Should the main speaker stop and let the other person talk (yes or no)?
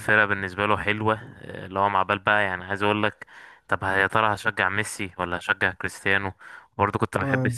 no